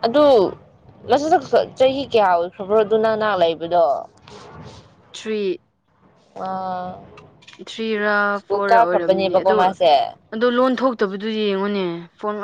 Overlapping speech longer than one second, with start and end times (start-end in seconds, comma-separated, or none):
none